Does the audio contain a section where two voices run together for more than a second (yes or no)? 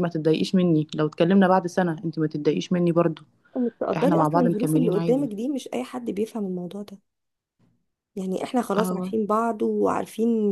yes